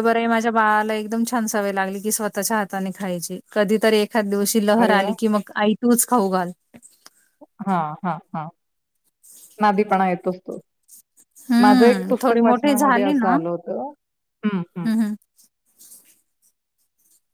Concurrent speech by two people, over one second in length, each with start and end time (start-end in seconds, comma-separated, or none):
11.6-13.3